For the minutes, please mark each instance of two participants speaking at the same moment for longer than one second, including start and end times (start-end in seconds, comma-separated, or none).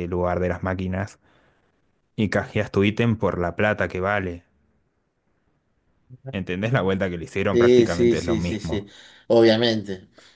7.5-8.9